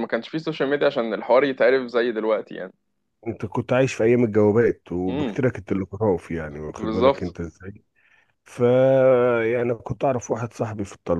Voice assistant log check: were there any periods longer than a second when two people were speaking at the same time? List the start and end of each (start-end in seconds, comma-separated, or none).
none